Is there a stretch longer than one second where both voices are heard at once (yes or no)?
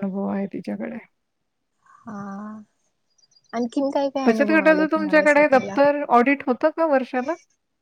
yes